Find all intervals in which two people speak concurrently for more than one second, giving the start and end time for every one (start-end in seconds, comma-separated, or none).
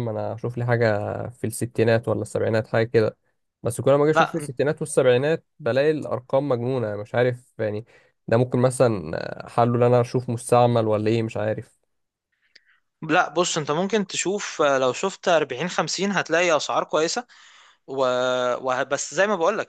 none